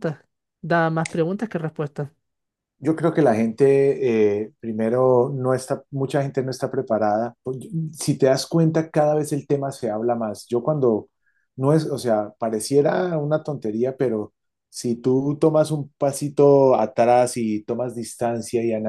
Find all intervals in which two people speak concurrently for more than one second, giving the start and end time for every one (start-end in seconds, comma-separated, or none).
none